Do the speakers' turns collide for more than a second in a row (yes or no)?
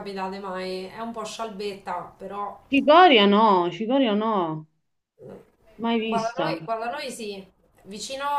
no